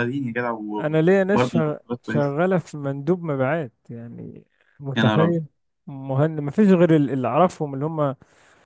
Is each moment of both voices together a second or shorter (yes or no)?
no